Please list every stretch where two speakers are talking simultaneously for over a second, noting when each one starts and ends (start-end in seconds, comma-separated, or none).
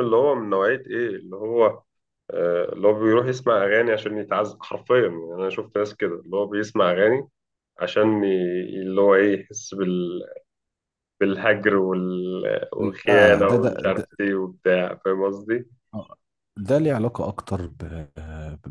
12.8-14.1